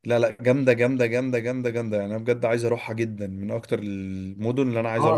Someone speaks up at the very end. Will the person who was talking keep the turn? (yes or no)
no